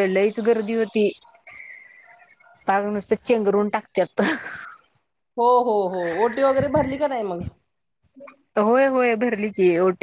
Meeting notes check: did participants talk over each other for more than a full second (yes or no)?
no